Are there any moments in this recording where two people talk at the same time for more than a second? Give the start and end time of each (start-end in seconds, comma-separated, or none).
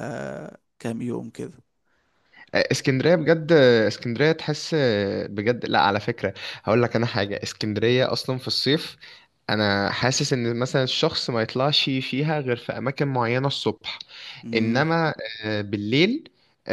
none